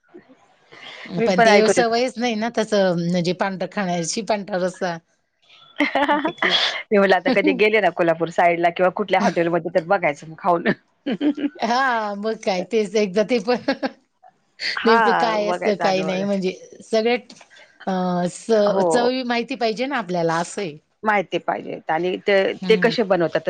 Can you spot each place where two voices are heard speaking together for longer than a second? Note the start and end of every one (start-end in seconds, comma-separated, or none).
14.8-16.2